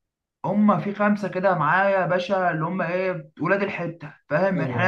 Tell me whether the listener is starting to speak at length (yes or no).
no